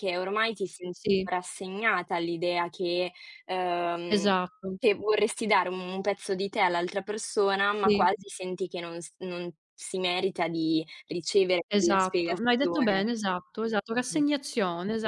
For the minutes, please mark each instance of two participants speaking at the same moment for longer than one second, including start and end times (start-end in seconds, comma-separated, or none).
11.7-13.1